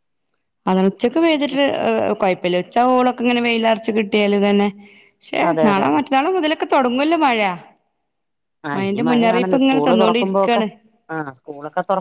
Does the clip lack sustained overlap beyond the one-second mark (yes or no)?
no